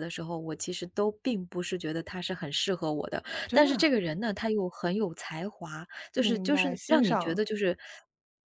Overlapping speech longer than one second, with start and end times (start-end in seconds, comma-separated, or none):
6.2-7.4